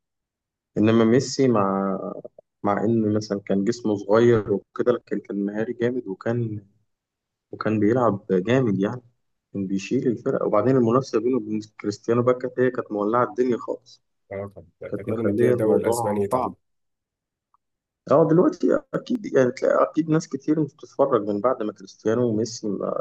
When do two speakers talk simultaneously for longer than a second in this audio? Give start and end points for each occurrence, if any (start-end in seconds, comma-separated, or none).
14.9-16.3